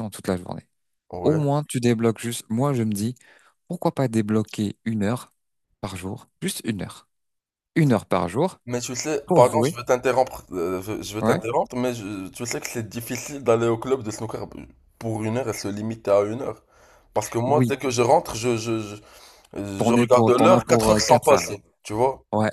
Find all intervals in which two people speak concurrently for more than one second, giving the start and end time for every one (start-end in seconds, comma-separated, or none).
19.8-21.5